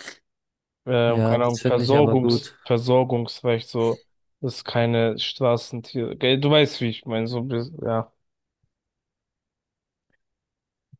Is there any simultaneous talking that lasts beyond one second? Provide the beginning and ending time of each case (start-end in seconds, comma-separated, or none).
1.0-2.6